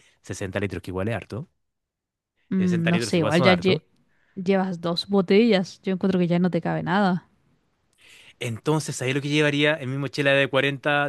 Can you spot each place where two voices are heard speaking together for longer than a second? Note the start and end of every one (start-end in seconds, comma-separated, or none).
2.6-3.8